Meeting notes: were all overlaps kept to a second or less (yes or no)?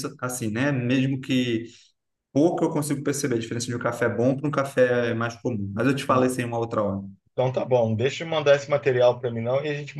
yes